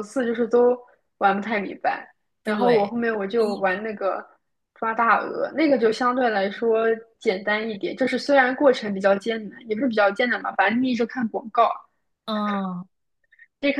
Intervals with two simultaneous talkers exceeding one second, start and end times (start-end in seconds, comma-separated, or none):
2.4-3.8